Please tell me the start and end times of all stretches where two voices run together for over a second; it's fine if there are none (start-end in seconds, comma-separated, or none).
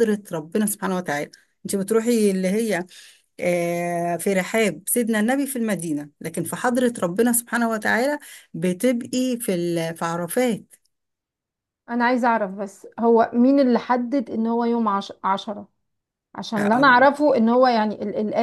none